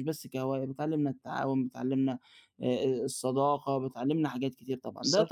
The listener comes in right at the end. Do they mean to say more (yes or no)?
no